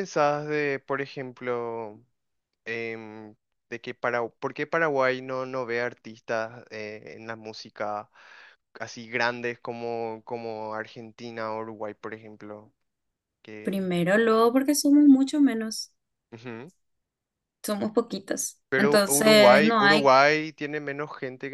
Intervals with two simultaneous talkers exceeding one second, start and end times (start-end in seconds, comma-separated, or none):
18.7-20.1